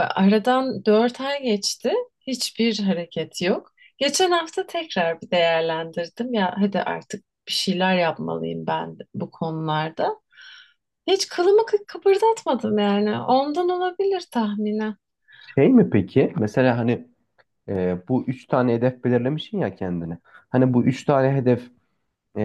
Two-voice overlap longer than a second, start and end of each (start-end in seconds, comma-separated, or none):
none